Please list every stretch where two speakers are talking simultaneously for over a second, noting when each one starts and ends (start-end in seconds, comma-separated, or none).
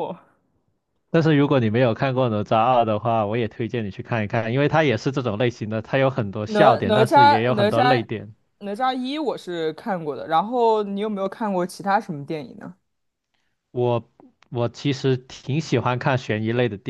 6.5-8.0